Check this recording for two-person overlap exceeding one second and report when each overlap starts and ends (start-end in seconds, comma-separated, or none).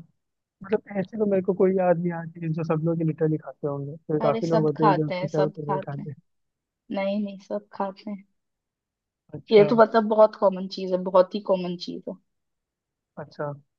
4.2-6.1